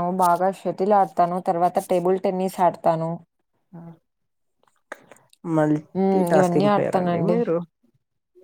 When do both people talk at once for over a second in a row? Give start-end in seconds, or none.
6.0-7.4